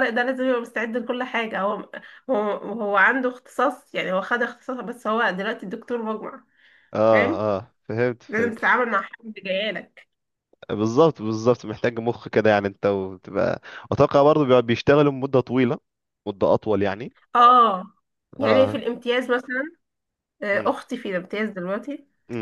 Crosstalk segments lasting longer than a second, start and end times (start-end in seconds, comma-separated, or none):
none